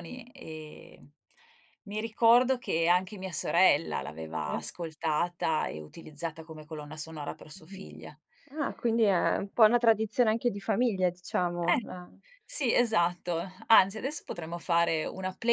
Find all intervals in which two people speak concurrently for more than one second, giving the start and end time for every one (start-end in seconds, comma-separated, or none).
none